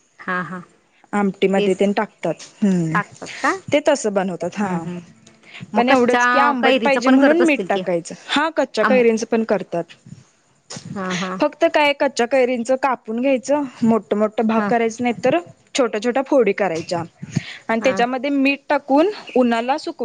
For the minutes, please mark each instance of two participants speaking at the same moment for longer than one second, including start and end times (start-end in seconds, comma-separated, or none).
5.8-7.8